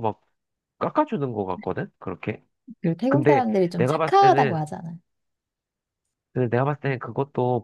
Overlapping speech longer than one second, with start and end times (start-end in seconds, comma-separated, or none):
3.1-4.6